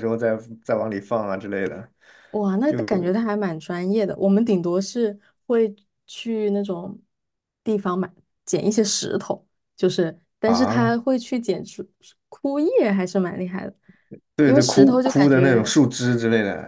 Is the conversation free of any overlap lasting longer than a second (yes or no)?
no